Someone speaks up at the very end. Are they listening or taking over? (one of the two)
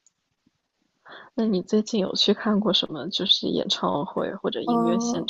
taking over